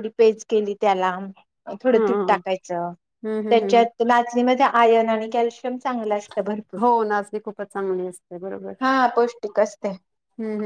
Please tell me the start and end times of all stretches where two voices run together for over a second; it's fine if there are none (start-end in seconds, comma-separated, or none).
none